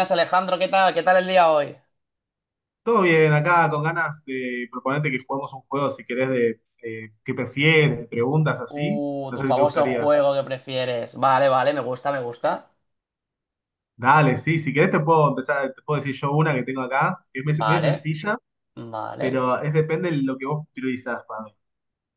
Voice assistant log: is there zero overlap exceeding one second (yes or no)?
no